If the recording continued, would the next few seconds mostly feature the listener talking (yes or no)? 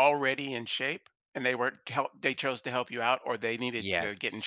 yes